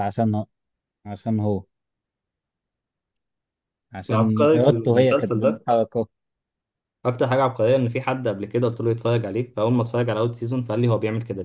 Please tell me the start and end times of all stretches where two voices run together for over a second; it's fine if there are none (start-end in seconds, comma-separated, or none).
4.1-5.7